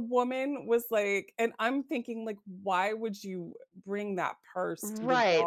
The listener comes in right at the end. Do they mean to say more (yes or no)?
yes